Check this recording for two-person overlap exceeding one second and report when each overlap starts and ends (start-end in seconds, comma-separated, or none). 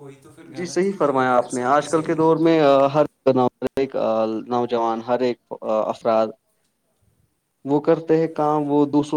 0.6-2.6